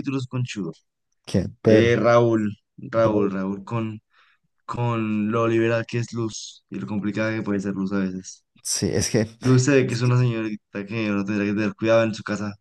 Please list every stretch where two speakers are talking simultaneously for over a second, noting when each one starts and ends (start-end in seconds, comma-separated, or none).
none